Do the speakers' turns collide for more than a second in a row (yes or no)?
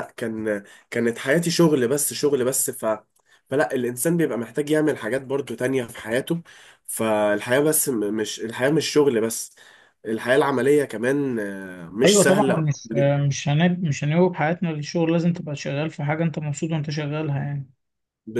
no